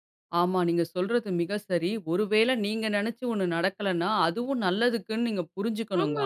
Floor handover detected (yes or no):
yes